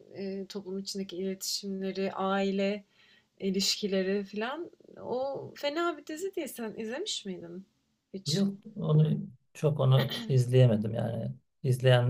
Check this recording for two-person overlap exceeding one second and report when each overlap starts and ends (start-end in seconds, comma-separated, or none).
none